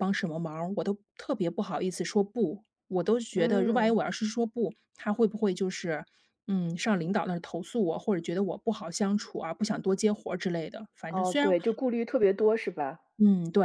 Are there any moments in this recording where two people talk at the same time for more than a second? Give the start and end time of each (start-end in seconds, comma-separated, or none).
none